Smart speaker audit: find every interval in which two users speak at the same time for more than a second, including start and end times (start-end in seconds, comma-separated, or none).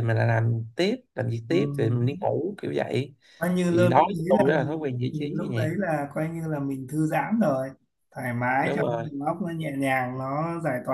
3.7-5.7